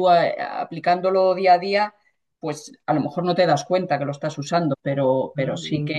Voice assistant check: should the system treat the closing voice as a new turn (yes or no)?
no